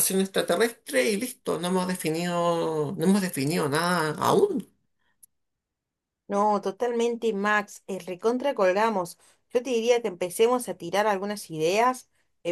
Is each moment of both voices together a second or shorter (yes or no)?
yes